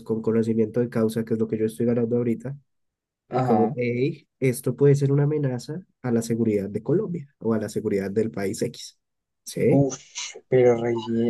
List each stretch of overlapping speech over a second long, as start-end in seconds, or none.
none